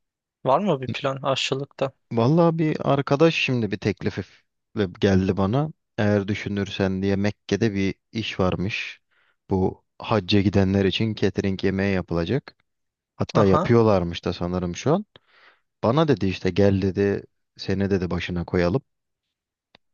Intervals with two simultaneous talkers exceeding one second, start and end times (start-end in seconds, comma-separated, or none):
none